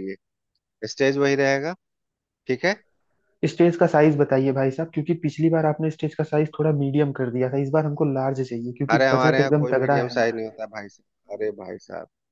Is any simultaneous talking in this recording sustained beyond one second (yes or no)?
yes